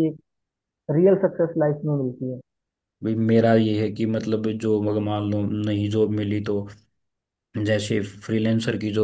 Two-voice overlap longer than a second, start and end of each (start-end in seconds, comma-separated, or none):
none